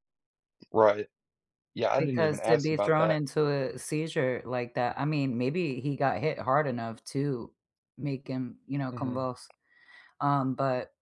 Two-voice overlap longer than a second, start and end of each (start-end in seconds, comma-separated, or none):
2.0-3.2